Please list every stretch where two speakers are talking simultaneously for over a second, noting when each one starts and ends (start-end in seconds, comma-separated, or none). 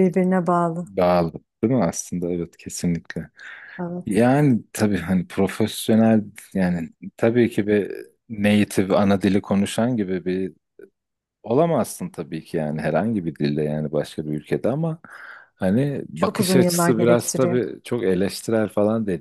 16.1-17.6